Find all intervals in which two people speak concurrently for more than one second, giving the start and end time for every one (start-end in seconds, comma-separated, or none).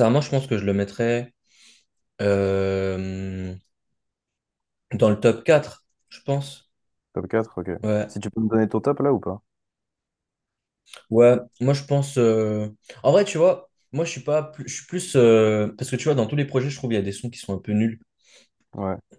none